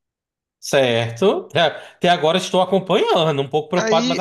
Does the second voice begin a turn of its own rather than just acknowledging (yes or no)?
yes